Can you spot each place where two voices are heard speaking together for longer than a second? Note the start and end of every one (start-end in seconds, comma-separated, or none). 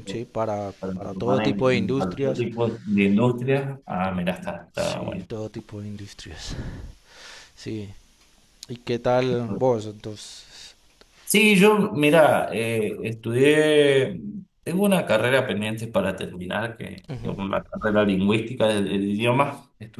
0.8-2.4